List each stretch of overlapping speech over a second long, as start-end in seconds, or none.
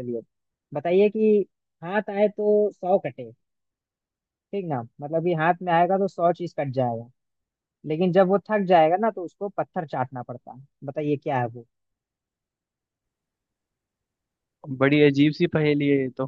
none